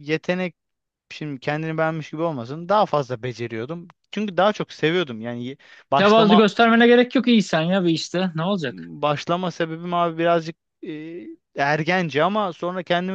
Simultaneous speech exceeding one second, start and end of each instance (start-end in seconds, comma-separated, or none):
none